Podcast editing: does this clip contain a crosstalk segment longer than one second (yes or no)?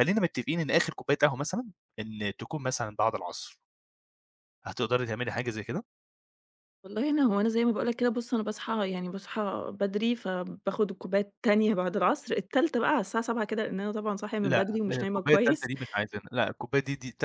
yes